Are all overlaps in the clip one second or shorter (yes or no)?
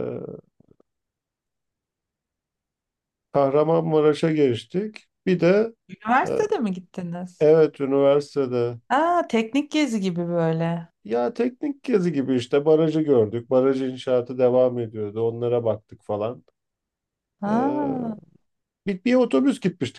yes